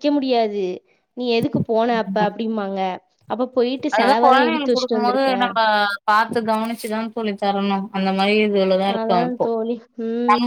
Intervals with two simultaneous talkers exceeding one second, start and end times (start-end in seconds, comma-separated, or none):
3.9-5.3